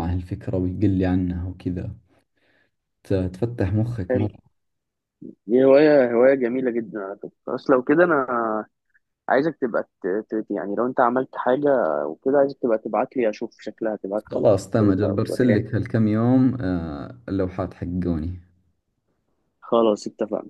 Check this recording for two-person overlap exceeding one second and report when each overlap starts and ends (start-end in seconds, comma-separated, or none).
14.2-15.6